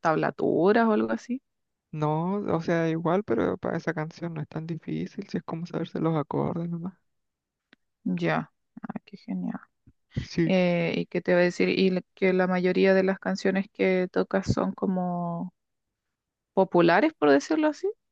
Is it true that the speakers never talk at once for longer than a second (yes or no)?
yes